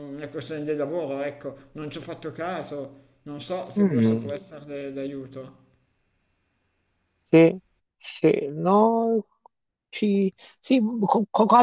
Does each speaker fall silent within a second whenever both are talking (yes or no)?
yes